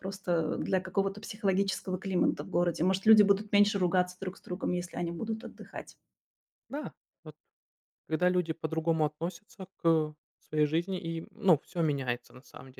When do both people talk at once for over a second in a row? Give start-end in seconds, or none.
none